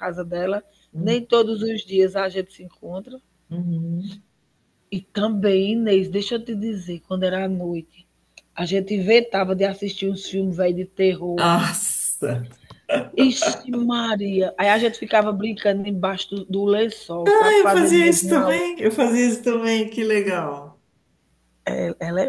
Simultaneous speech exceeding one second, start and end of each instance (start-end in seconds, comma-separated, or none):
17.3-18.7